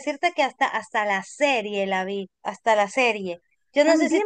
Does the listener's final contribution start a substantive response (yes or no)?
yes